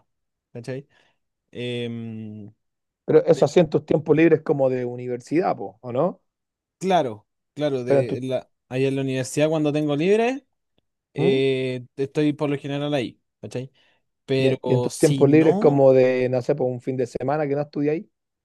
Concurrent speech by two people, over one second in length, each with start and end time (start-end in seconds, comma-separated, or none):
14.4-15.8